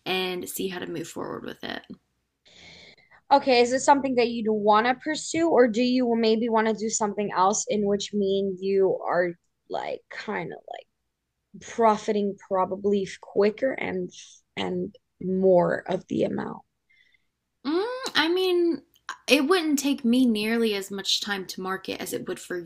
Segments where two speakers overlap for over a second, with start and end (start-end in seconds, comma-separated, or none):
none